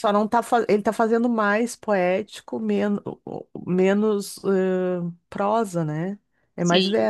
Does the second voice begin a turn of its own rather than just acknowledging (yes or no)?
yes